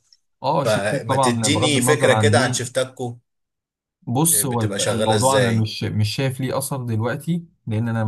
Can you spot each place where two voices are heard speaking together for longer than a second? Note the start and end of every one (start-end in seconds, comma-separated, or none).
0.7-2.6, 4.3-5.7